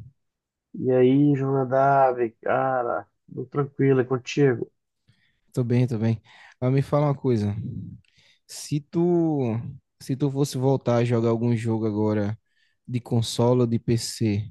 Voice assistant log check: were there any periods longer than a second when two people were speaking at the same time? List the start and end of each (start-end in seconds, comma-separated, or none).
none